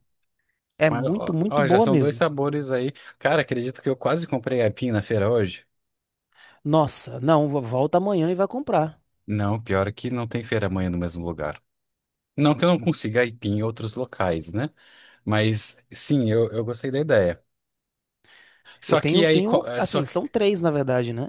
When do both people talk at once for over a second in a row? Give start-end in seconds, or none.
0.9-2.2, 18.9-20.2